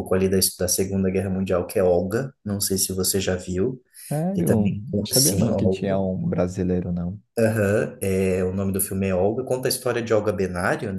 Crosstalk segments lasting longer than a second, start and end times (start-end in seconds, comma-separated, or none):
4.3-5.9